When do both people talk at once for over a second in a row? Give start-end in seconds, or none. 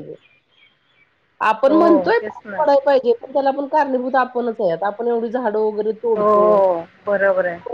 none